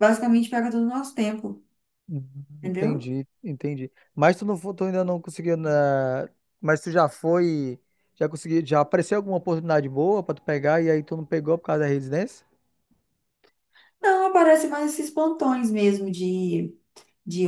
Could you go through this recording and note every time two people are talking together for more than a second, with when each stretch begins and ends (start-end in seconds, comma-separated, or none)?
none